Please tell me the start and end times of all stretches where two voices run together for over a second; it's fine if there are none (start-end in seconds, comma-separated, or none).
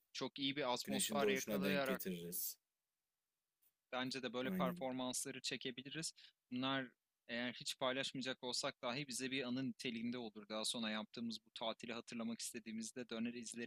0.8-2.1